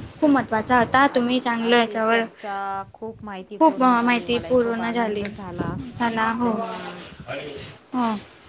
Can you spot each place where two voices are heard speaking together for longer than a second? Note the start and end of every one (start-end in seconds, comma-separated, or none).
3.6-5.2